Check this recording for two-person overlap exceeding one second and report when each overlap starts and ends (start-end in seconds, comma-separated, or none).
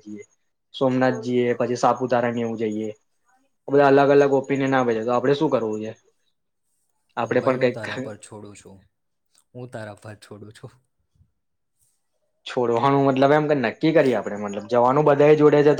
none